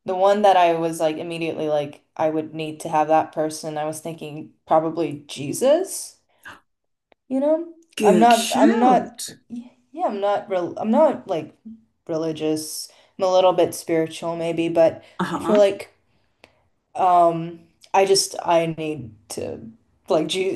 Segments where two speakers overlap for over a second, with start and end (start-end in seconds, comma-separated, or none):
8.0-9.2